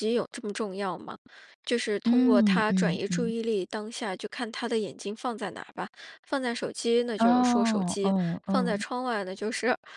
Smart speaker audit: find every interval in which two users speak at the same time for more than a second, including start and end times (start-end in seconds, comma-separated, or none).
2.0-3.3, 7.2-8.8